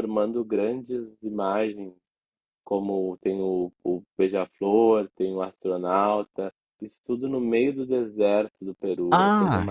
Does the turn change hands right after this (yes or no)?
yes